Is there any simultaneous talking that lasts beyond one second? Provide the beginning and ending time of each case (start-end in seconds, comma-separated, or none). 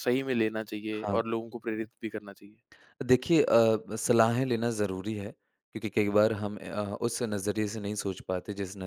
none